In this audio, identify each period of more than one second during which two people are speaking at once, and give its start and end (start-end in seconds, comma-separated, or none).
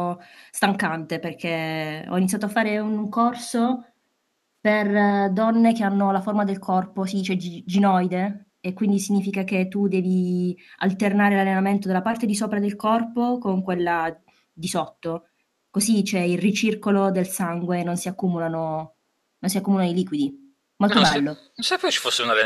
none